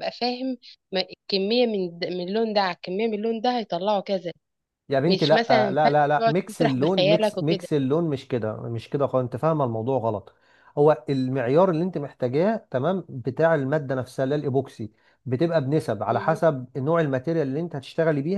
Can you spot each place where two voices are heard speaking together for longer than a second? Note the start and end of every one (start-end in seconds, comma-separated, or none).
5.1-7.7